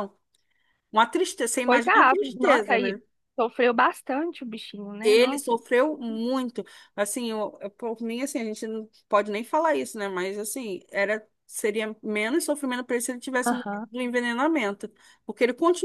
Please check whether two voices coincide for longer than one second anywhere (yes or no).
yes